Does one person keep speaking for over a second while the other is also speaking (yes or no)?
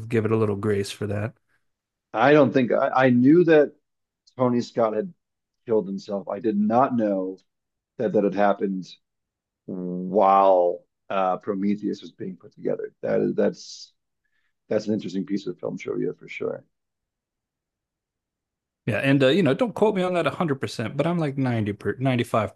no